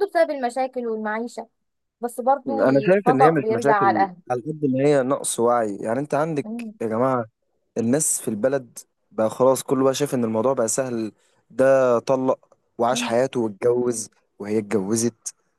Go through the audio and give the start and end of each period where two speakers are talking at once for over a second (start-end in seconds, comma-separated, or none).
2.5-4.2